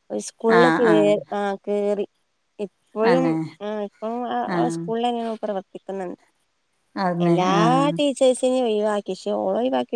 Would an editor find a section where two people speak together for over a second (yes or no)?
no